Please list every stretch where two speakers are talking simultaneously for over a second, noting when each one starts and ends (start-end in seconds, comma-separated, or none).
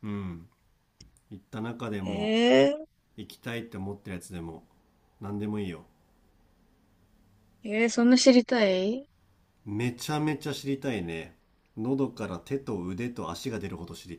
none